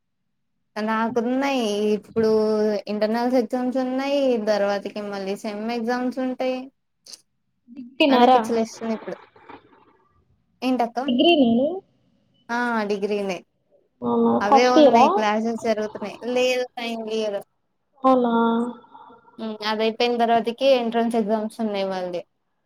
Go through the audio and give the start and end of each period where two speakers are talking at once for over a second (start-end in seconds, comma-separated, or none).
none